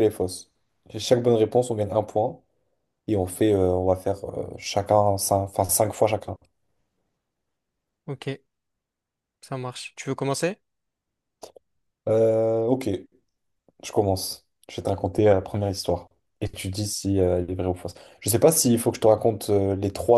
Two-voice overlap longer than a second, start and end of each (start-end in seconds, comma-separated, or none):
none